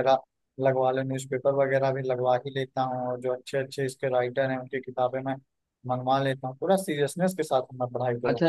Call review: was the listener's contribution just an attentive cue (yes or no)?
no